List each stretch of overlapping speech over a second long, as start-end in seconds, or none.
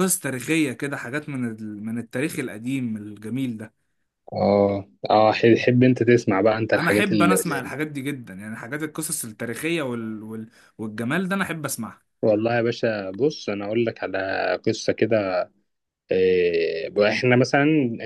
none